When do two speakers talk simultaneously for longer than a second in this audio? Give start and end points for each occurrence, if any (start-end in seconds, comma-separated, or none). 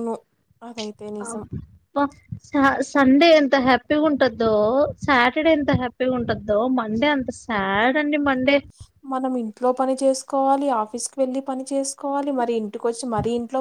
none